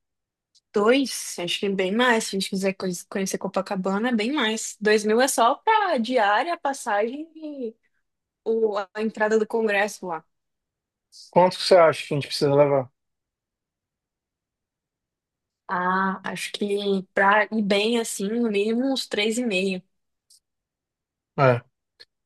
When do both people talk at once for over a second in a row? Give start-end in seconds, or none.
none